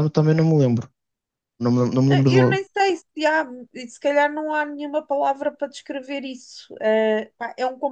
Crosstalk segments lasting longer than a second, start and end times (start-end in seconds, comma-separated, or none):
none